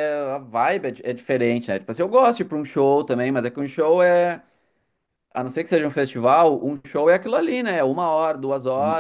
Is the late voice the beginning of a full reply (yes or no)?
no